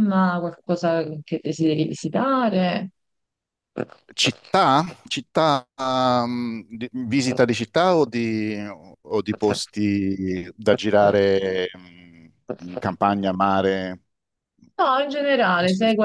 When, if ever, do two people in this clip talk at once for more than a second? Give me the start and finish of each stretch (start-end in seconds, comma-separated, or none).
none